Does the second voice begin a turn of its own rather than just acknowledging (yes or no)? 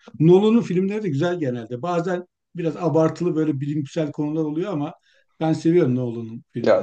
yes